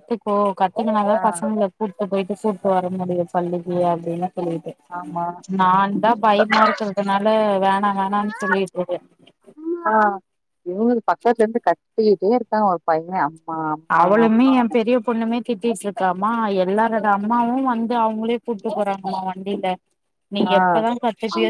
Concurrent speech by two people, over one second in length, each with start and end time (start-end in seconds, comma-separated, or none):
none